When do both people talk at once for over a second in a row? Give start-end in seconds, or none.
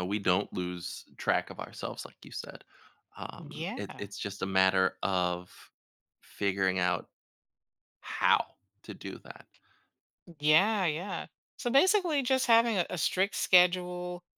none